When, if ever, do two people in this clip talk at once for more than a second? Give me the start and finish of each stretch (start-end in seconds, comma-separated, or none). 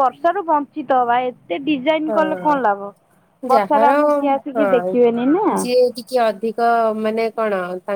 none